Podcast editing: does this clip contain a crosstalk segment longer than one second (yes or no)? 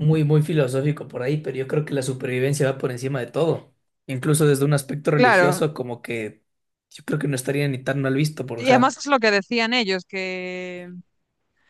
no